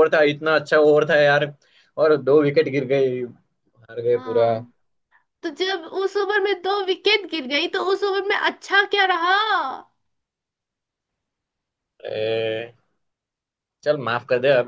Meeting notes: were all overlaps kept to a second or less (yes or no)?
yes